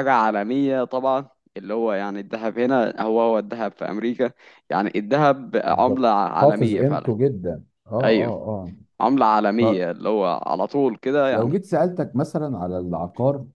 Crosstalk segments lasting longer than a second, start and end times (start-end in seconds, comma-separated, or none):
5.7-7.1